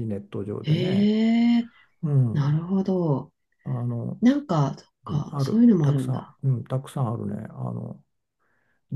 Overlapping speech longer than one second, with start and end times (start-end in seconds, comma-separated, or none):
5.1-6.4